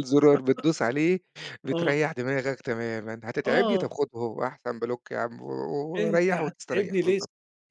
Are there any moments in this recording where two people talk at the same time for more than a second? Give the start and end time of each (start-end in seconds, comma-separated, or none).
6.0-7.2